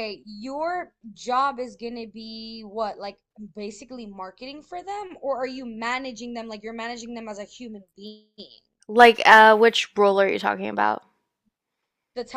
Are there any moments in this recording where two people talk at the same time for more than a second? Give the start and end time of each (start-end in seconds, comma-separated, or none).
none